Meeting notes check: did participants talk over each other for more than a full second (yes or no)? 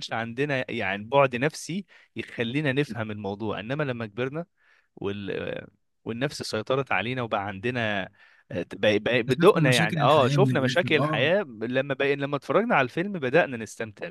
yes